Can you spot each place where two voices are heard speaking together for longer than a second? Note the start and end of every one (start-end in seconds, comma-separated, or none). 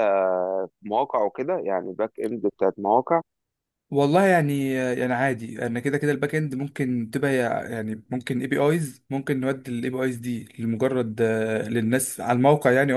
none